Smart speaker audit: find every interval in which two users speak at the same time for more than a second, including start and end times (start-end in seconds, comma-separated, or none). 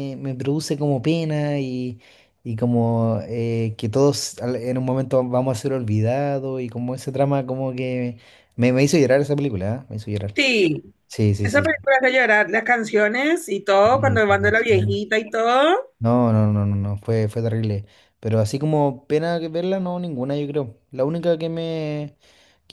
13.8-15.0